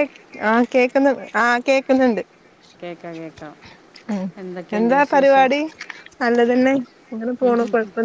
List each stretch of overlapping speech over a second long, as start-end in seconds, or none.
none